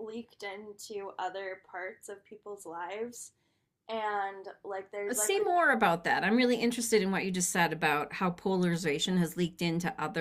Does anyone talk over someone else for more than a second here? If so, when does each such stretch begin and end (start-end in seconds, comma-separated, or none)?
none